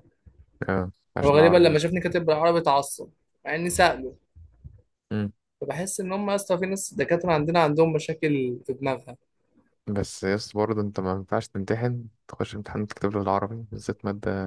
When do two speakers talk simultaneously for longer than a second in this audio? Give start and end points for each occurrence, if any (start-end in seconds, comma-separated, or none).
none